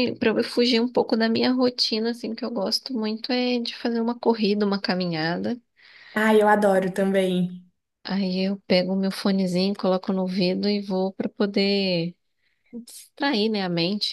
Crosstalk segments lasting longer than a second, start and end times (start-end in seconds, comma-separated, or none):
none